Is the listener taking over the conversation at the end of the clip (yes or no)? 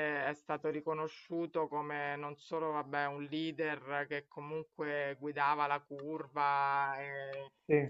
no